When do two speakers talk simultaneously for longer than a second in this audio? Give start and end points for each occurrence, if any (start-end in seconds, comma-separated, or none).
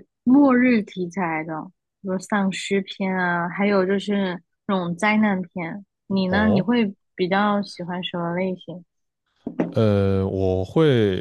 none